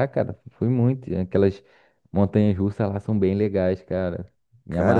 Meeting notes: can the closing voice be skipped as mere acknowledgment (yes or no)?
no